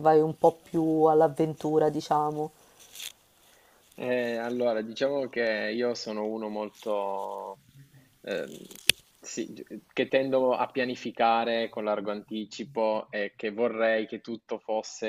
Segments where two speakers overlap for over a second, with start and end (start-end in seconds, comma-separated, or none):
none